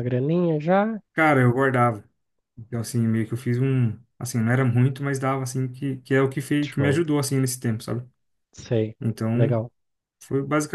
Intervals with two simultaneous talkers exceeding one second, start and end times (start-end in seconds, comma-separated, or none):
none